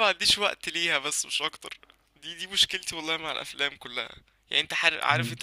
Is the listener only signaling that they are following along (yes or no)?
yes